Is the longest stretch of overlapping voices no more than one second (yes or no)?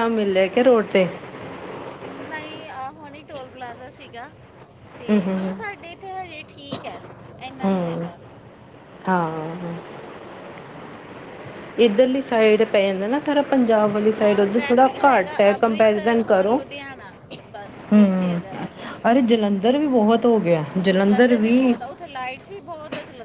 no